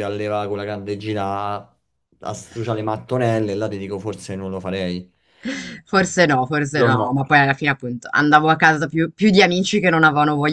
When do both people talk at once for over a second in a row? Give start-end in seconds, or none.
none